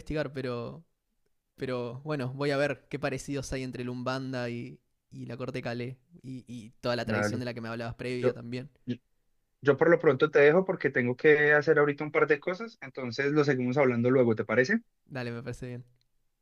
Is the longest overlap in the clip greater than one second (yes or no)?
no